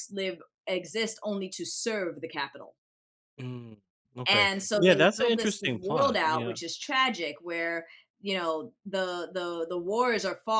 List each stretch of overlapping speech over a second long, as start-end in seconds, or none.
4.3-6.6